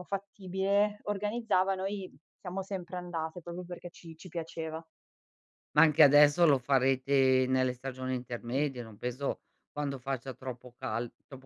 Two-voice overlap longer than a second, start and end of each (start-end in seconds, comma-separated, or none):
none